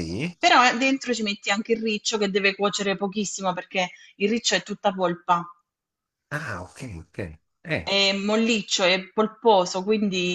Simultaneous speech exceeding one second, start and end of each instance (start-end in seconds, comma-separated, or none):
none